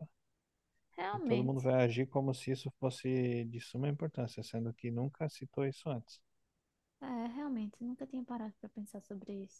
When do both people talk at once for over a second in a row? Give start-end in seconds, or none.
none